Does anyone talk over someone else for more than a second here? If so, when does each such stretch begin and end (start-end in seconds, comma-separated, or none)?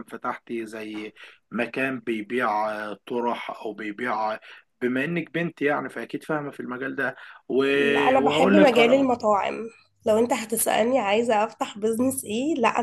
7.8-9.1